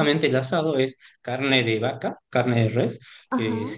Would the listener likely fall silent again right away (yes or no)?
yes